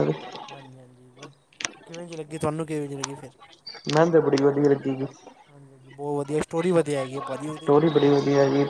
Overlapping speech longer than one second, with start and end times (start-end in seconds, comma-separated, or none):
none